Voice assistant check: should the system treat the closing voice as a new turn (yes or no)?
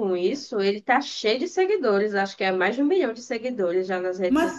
yes